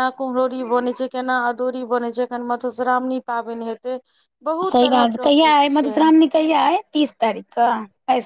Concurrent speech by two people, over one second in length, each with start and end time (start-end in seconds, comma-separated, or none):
4.7-6.2